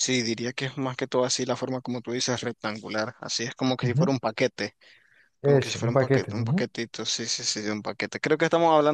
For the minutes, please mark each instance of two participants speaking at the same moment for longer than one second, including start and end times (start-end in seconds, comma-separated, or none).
5.4-6.7